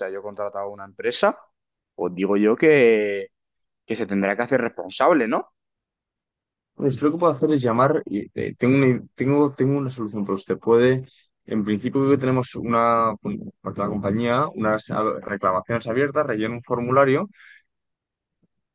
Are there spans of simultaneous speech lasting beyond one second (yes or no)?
no